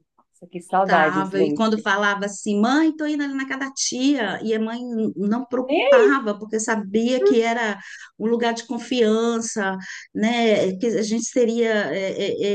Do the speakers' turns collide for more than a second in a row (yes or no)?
yes